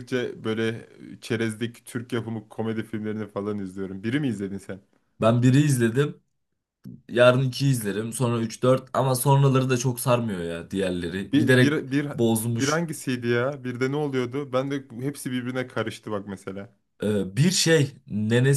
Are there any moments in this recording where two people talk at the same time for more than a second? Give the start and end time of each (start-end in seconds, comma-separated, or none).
none